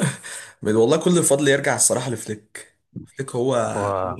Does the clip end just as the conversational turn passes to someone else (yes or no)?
no